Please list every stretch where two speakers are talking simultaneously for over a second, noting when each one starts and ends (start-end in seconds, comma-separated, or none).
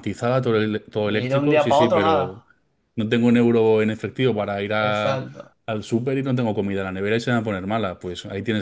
1.0-2.4